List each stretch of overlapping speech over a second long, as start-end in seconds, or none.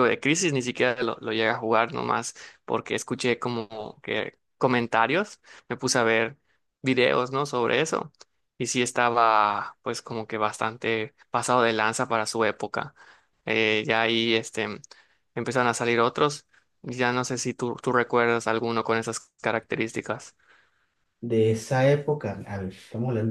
none